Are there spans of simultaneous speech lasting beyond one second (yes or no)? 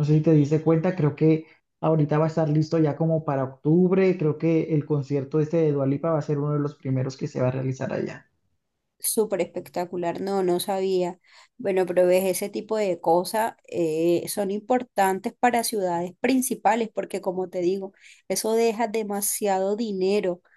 no